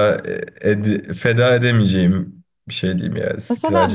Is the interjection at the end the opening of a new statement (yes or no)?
yes